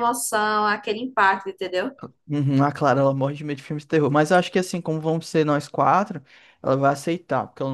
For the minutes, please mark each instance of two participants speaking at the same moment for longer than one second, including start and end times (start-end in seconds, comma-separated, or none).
none